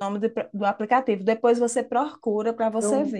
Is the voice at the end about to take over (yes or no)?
yes